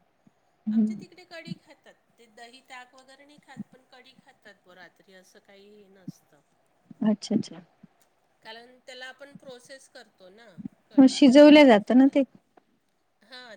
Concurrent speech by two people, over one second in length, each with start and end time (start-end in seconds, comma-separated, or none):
none